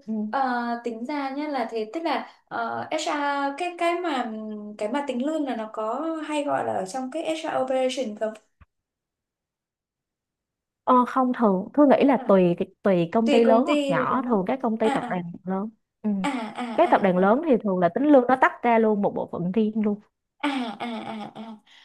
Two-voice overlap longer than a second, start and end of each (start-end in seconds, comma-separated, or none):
13.2-15.2